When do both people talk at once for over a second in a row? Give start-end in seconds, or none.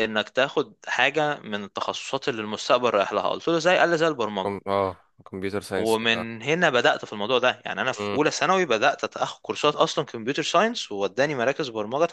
none